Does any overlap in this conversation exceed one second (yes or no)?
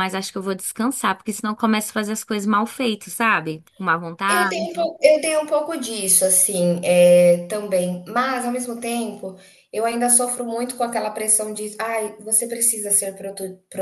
no